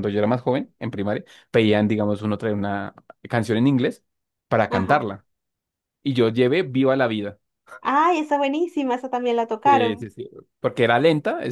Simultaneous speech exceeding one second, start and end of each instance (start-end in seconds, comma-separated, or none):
none